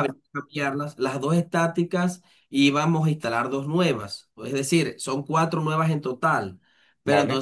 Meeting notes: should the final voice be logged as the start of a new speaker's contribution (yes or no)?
no